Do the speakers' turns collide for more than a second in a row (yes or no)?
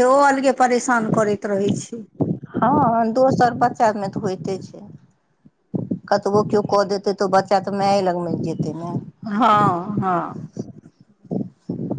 no